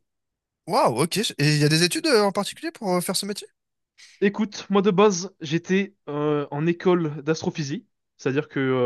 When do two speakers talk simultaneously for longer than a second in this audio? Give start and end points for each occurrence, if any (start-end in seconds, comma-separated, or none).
none